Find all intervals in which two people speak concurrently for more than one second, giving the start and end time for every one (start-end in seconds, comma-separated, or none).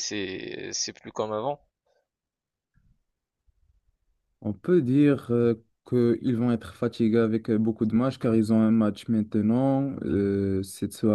none